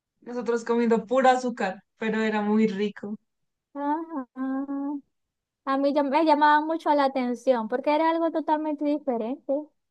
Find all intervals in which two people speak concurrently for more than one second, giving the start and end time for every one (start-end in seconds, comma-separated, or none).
none